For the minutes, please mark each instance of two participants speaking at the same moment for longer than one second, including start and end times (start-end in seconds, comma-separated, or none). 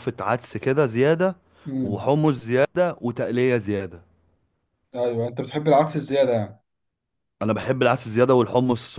none